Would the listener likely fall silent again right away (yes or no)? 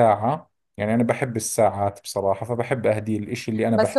no